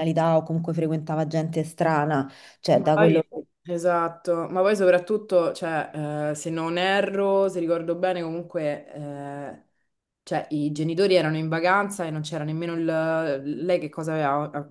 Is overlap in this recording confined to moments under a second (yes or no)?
yes